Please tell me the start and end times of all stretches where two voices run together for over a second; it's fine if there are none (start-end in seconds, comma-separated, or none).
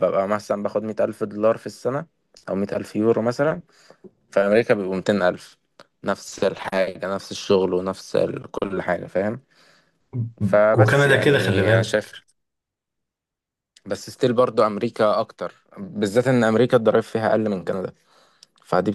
10.7-12.1